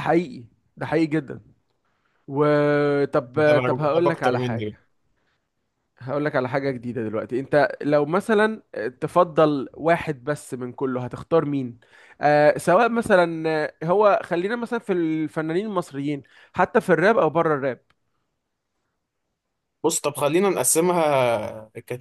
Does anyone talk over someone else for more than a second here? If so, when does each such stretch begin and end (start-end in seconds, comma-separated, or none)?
3.4-4.8